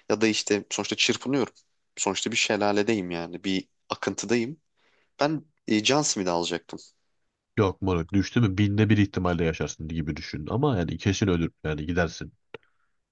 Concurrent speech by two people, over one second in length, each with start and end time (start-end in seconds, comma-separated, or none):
none